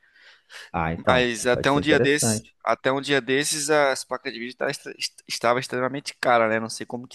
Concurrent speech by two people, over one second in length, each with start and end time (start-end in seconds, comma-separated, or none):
0.9-2.5